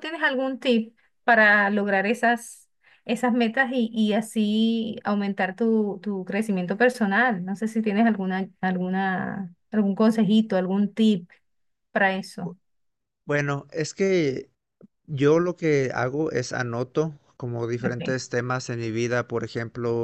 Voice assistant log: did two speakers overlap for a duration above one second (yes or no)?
no